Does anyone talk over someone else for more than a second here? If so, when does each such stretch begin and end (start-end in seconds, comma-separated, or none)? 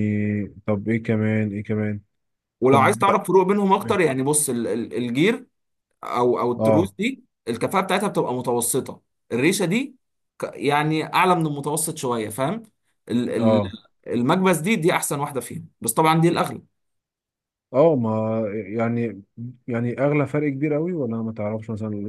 none